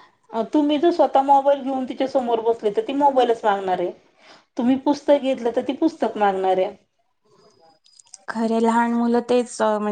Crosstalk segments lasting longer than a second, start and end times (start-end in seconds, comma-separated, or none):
none